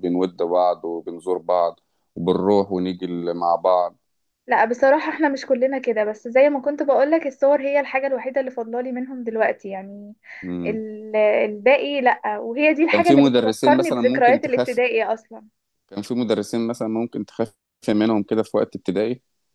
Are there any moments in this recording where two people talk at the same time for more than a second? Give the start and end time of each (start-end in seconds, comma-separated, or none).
12.9-14.8